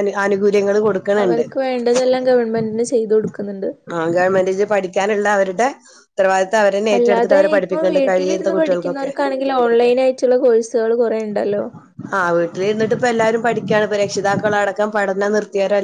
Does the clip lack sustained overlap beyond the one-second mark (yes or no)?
no